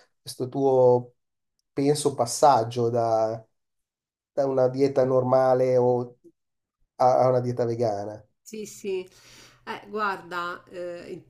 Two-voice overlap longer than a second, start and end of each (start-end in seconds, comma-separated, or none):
none